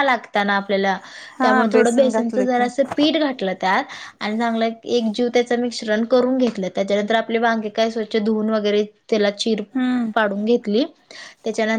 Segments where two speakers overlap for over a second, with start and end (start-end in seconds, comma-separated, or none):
1.4-2.6